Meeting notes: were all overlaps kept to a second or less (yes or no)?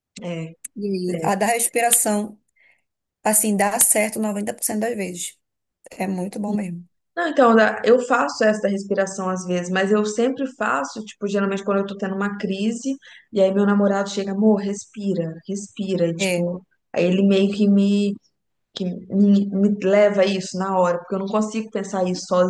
yes